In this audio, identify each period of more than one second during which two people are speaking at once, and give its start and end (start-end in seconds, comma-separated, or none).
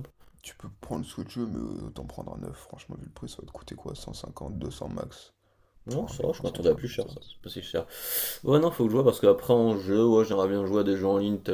5.9-7.3